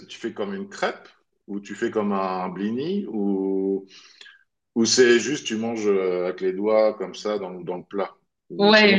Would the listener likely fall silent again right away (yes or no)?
no